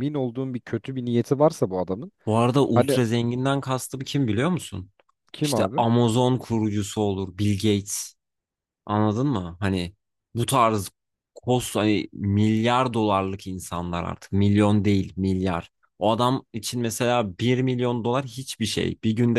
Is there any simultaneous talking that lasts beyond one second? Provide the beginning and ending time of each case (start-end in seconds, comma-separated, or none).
none